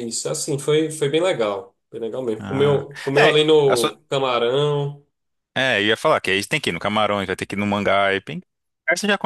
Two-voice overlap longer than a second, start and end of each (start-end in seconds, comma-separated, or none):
2.4-4.0